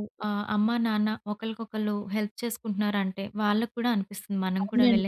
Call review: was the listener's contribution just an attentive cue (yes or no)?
no